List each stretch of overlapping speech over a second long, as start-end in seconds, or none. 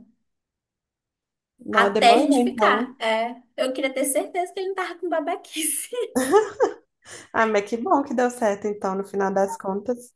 1.7-3.0